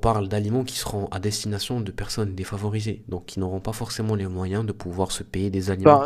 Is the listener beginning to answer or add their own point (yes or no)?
yes